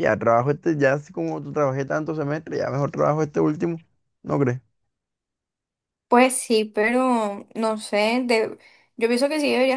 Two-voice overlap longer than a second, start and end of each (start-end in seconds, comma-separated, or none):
none